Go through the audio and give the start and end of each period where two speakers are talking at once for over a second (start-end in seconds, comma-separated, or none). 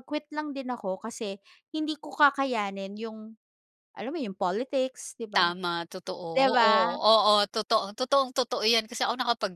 none